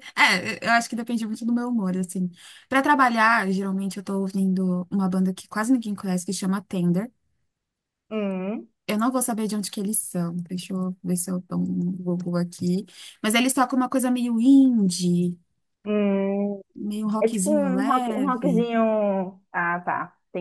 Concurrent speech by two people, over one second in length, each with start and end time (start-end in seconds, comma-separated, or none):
17.2-18.7